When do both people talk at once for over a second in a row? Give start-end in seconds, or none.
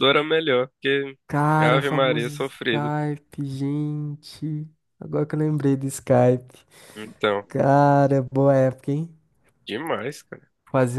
1.6-2.9